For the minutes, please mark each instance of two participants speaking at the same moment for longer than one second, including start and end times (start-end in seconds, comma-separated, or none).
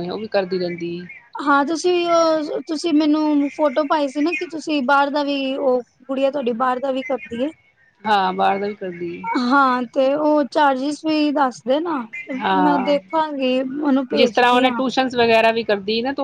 none